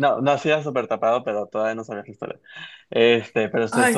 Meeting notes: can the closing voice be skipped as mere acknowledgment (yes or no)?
yes